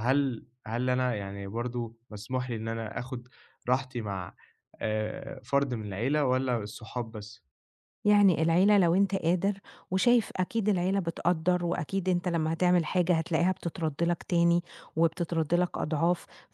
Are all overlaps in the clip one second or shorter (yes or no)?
yes